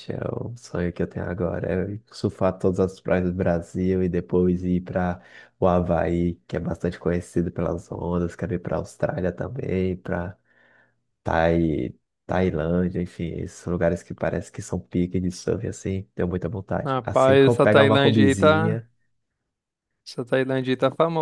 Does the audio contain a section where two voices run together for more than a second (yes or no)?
yes